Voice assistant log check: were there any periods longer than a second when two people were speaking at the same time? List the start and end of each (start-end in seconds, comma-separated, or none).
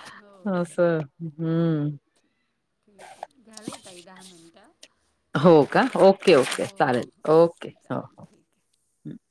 none